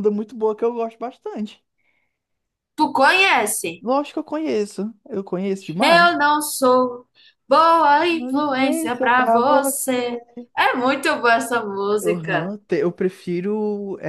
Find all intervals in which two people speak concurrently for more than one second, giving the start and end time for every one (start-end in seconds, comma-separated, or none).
8.1-10.2